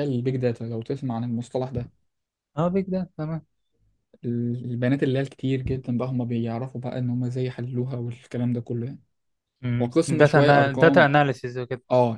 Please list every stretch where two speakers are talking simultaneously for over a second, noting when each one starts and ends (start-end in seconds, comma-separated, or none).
9.8-11.1